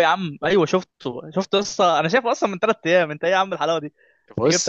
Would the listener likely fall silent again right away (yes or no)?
yes